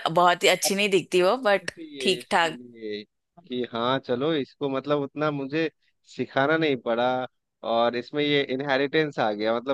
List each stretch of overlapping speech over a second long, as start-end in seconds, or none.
0.7-2.6